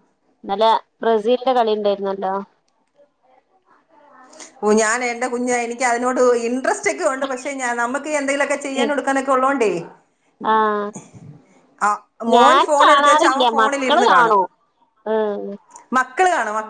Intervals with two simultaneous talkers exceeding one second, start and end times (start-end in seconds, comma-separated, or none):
12.3-14.4